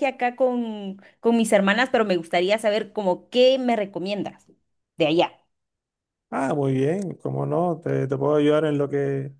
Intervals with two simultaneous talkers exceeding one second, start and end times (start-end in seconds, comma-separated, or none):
none